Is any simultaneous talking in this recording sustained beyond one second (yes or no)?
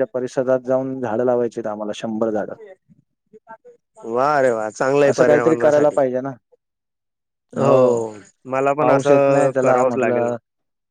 yes